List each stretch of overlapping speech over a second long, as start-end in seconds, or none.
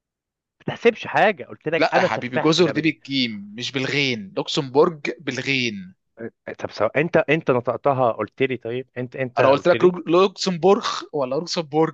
1.8-3.0